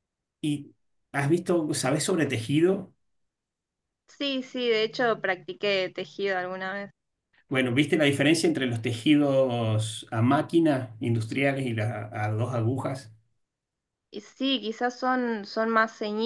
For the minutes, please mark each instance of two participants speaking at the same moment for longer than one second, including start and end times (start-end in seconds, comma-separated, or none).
none